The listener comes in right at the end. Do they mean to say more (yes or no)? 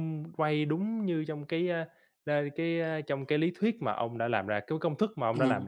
yes